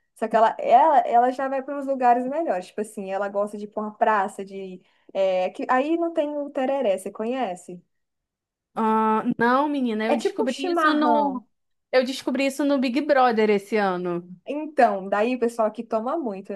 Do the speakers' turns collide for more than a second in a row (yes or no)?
yes